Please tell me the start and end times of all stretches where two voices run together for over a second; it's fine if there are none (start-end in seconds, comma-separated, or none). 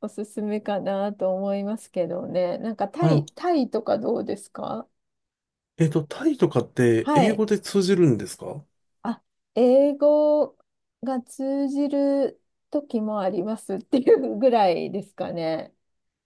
none